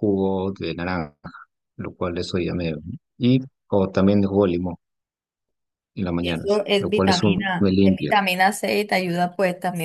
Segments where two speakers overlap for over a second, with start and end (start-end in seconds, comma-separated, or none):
6.2-8.1